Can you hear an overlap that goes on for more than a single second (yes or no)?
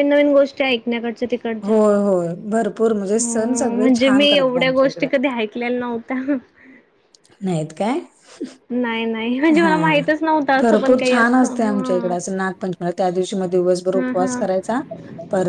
yes